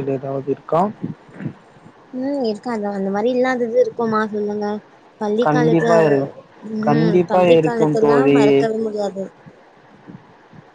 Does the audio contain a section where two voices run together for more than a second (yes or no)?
yes